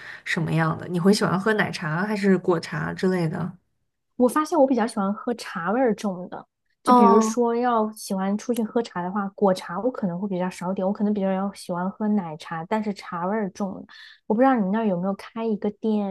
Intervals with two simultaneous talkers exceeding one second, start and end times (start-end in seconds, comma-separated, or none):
none